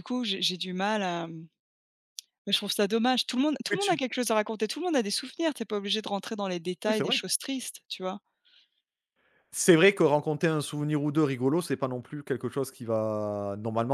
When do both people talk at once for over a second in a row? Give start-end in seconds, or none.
none